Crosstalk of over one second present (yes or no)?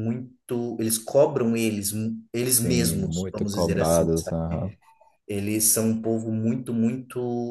yes